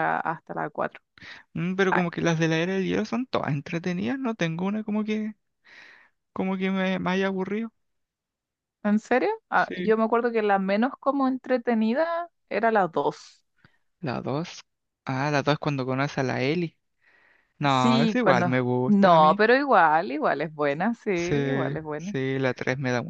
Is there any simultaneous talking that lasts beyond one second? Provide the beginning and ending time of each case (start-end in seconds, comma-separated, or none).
17.7-19.4